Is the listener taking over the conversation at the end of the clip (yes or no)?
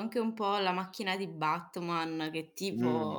no